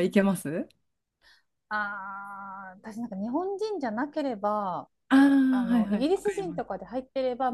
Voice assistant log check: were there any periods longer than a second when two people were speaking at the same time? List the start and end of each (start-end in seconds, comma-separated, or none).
5.5-6.8